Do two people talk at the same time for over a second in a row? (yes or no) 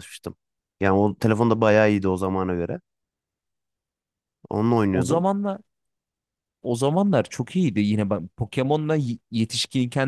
no